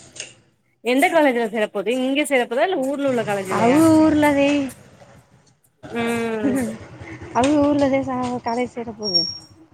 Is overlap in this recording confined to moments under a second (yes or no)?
yes